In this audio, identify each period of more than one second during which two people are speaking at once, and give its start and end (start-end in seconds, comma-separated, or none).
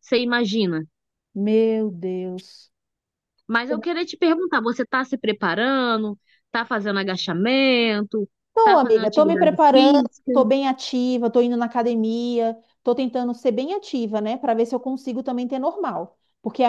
8.5-10.5